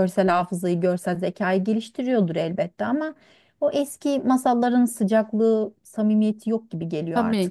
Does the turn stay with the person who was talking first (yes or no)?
no